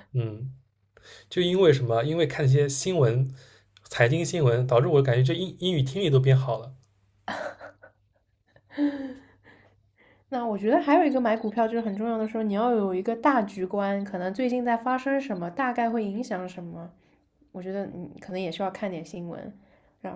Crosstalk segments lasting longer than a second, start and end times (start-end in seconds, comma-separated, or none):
none